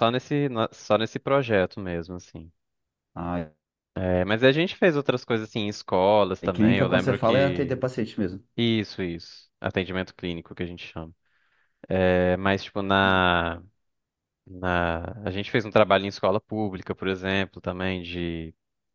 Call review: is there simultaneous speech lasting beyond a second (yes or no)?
yes